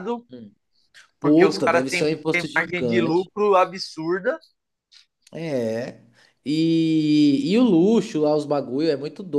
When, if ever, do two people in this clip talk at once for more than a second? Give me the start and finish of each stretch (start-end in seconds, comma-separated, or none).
1.2-3.3